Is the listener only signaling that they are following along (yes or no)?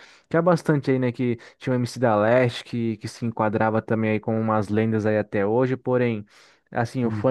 yes